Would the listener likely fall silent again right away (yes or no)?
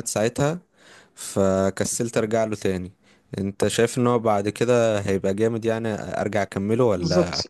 no